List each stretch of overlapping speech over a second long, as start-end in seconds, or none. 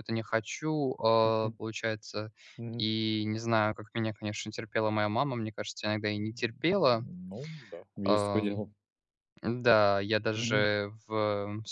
none